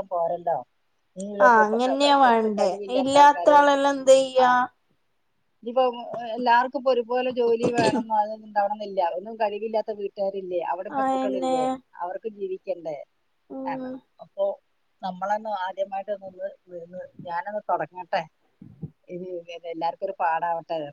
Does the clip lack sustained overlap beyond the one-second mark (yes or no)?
no